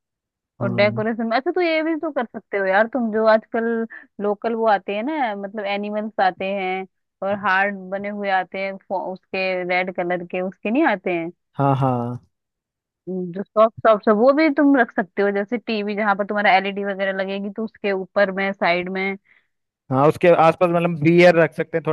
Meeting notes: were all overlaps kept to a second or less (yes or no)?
yes